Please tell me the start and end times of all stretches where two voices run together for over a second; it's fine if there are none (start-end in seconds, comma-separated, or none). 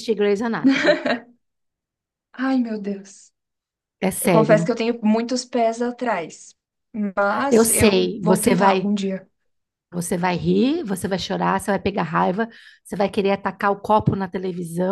7.5-8.9